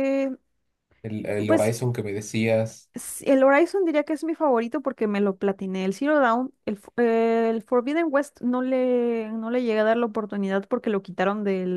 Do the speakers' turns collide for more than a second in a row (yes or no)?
no